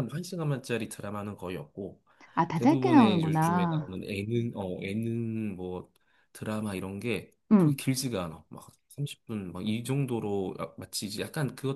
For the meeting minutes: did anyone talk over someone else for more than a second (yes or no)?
yes